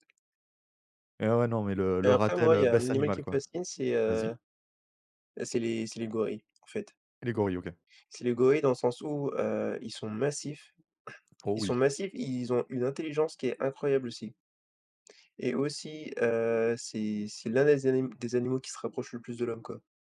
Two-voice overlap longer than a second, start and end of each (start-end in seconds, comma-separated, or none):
2.0-3.4